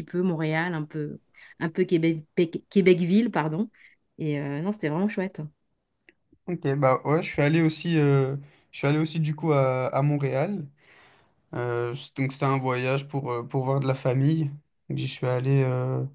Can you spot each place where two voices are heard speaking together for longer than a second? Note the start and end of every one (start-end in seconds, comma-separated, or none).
none